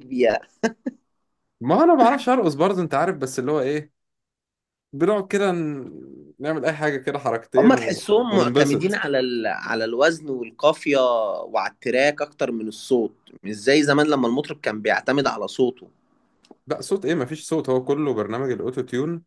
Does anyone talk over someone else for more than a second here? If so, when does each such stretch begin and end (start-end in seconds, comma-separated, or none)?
7.6-9.0